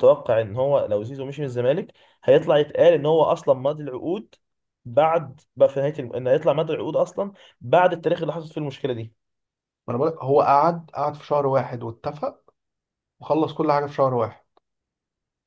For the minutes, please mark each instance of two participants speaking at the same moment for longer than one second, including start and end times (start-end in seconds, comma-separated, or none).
none